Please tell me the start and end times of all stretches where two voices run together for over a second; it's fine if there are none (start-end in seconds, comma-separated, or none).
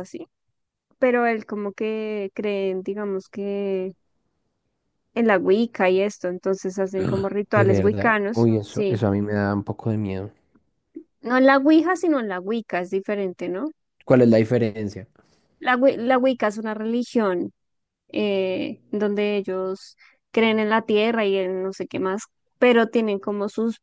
7.0-9.0